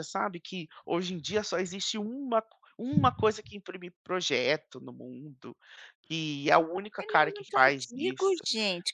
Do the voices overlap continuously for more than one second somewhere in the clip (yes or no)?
yes